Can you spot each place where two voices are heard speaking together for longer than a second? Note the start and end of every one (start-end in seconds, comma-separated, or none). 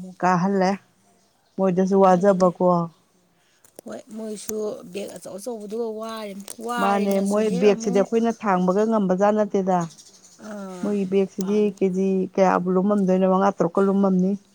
none